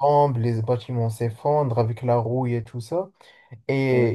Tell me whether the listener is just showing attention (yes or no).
yes